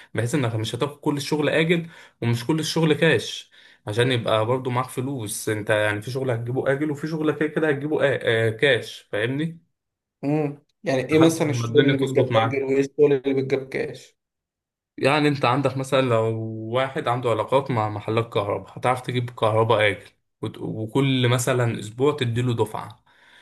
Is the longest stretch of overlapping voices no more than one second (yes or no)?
no